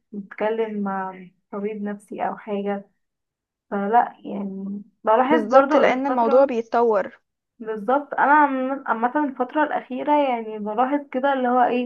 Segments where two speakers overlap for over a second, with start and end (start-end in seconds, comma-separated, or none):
5.3-6.5